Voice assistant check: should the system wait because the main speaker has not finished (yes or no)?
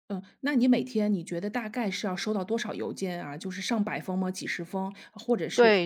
no